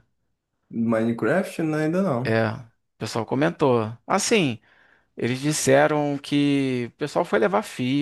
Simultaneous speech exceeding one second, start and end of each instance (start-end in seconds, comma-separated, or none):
none